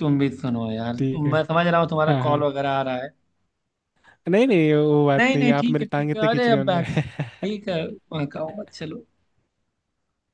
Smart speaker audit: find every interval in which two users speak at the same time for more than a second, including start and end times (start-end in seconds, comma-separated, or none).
5.2-6.9